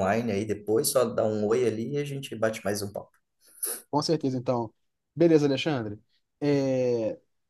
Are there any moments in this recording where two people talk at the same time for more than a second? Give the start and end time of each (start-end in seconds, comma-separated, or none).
none